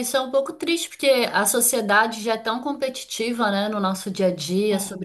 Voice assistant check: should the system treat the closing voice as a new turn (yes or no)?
no